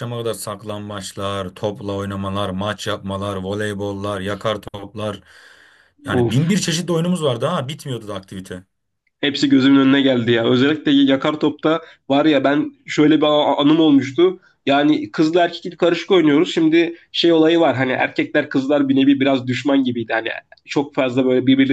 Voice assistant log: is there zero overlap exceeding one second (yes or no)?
yes